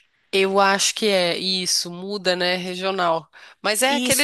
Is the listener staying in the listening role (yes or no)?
yes